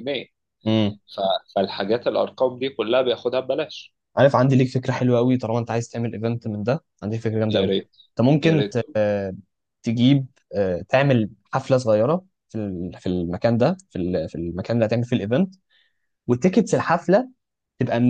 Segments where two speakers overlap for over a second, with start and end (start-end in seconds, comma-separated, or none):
none